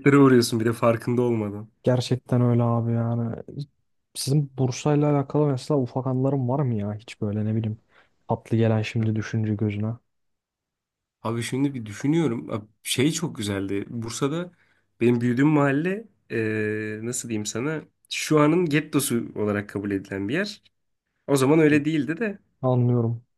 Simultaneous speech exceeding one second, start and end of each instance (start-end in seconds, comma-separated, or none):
none